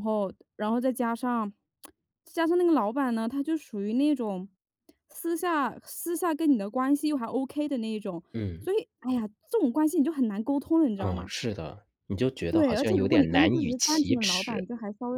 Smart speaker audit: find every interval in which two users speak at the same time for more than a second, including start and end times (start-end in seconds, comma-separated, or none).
12.5-14.7